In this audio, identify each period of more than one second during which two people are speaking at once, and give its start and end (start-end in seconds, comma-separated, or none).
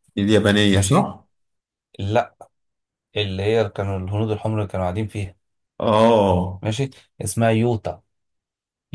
none